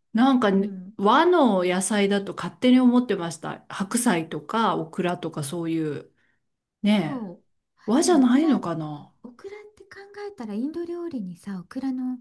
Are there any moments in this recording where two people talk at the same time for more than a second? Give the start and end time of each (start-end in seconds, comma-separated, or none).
none